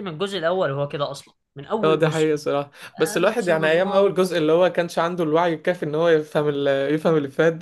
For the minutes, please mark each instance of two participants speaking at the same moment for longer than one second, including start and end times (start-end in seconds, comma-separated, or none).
3.0-4.2